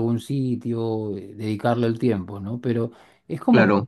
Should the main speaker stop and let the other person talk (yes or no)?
no